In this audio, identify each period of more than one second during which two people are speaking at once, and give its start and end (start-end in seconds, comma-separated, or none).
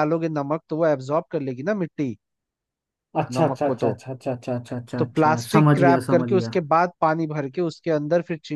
5.0-6.5